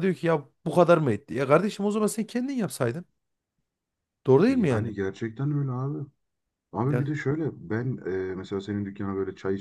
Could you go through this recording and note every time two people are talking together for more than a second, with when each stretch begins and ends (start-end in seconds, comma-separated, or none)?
none